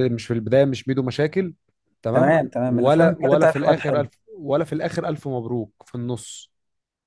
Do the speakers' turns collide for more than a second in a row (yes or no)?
yes